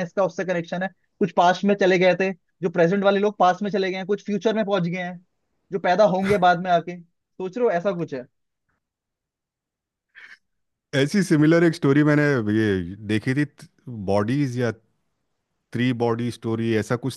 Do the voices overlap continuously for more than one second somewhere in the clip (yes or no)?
no